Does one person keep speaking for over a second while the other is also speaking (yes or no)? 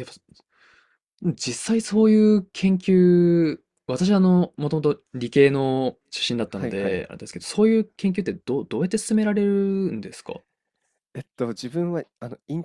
no